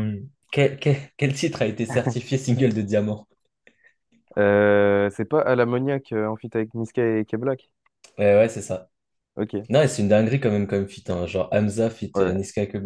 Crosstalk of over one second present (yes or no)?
no